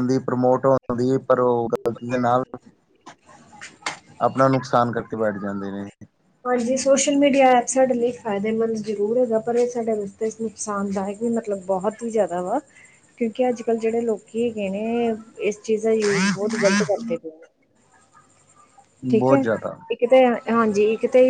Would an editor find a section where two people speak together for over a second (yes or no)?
no